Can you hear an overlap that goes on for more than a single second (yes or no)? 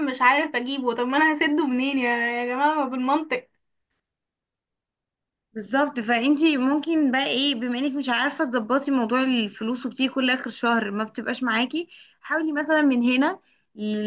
no